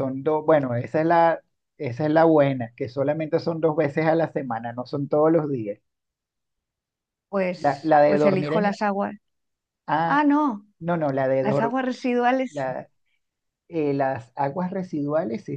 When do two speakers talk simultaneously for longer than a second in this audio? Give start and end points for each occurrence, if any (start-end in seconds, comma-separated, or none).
7.6-8.8